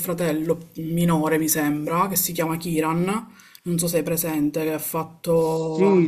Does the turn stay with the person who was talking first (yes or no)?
no